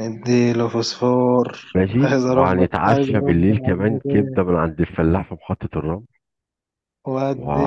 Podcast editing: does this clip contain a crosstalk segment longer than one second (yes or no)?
yes